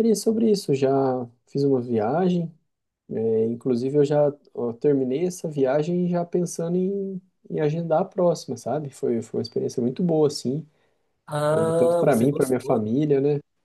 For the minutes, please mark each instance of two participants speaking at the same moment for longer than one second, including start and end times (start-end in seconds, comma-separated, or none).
11.5-12.9